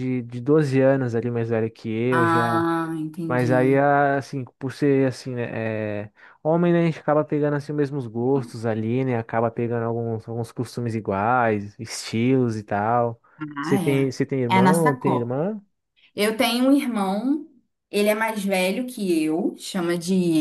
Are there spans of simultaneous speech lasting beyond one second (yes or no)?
yes